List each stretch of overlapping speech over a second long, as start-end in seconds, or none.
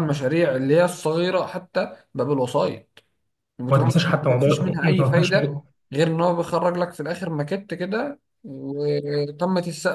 3.7-5.6